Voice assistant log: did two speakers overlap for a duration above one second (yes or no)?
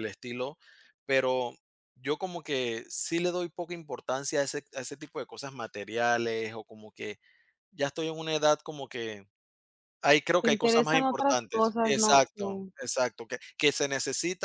yes